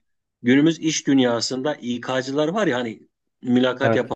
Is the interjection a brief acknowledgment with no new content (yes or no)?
yes